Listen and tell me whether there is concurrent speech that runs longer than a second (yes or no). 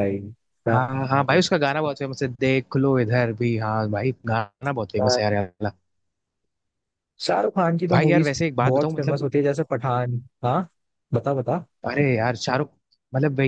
yes